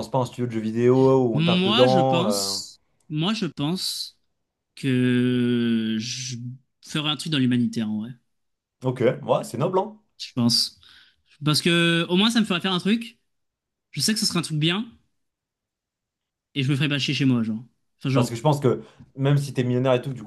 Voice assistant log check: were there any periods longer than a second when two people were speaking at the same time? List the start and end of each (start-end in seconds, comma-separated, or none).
1.3-2.5